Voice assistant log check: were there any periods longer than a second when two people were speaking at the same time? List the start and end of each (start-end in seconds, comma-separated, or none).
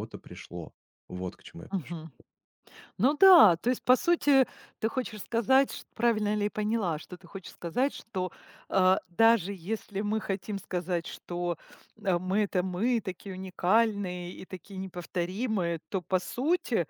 none